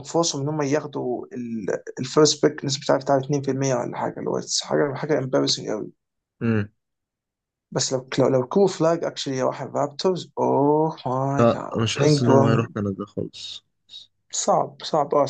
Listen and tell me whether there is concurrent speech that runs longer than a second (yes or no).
yes